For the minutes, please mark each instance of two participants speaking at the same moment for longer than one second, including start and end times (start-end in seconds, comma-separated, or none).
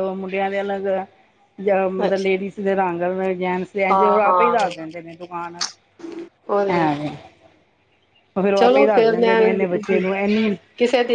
8.6-10.0